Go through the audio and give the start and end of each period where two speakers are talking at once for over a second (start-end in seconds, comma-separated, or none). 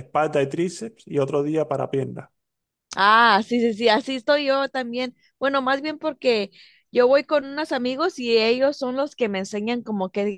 none